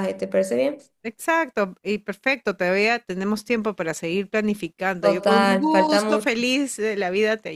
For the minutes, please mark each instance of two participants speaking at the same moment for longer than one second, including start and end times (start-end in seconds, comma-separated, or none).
5.0-6.3